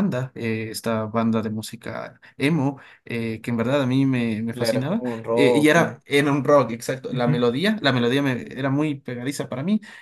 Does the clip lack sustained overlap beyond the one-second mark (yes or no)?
no